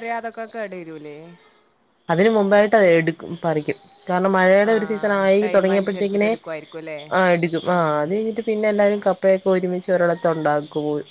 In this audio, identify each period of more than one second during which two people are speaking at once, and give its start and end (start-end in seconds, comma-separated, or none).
4.7-6.3